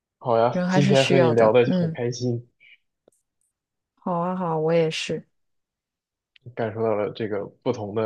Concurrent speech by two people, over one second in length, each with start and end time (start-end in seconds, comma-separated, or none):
0.5-2.0